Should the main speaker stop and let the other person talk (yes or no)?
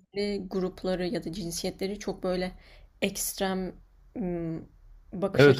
yes